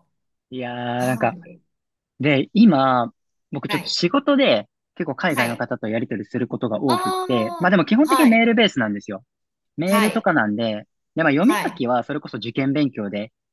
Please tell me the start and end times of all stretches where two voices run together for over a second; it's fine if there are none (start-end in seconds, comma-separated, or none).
6.9-8.5